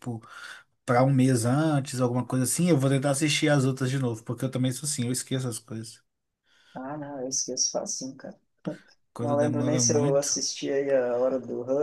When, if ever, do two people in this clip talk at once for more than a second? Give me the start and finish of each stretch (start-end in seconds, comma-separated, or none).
9.2-10.4